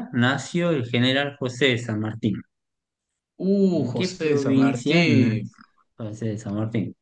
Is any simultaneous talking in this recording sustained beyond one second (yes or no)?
yes